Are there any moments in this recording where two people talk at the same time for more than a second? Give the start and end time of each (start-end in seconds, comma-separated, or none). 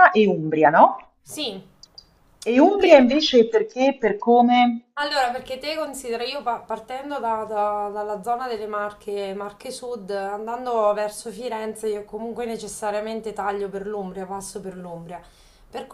none